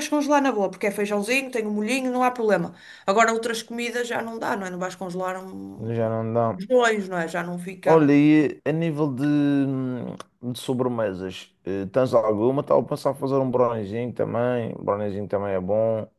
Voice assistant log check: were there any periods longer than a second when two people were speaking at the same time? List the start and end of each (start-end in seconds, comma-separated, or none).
none